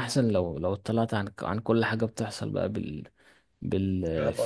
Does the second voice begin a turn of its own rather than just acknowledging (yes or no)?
no